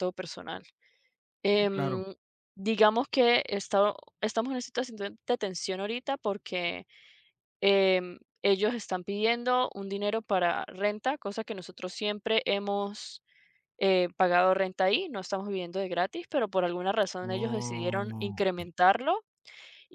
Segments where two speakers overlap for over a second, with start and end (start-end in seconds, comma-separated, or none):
17.2-18.7